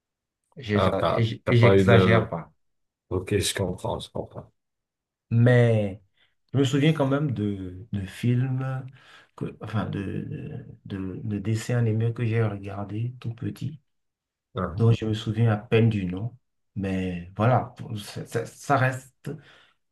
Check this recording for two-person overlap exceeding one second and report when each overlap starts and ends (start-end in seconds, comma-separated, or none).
0.7-2.3